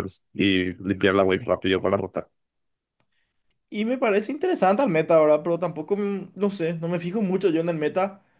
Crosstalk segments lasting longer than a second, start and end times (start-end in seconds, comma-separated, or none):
none